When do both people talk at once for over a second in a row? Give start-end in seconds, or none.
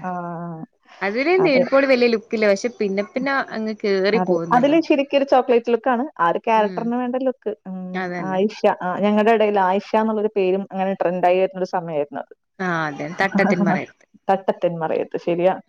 none